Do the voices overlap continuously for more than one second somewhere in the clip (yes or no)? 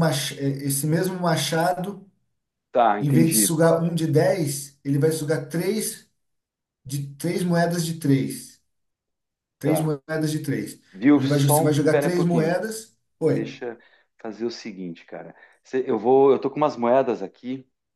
yes